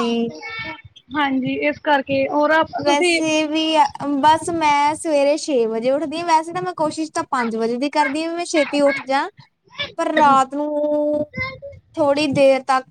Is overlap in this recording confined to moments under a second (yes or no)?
yes